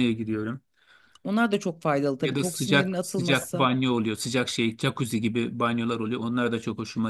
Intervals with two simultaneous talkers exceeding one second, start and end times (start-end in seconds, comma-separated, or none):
2.2-3.7